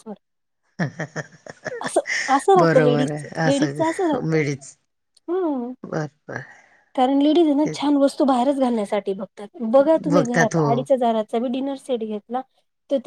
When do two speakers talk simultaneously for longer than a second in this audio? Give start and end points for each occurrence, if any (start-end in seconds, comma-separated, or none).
2.6-4.4